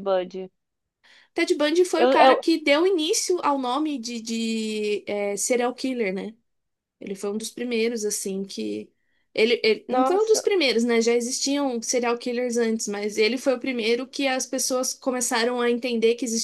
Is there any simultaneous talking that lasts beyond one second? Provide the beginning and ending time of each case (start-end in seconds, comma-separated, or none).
none